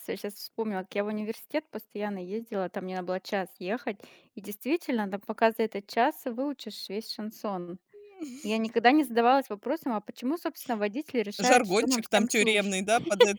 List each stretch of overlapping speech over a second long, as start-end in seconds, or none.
11.5-12.8